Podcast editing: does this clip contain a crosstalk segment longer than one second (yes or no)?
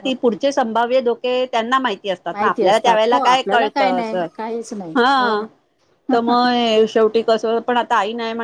yes